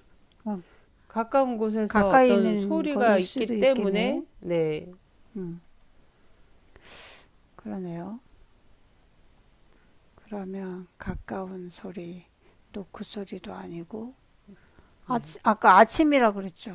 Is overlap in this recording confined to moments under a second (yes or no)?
no